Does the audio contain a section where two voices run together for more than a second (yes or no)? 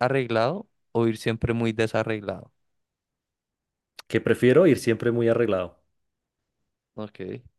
no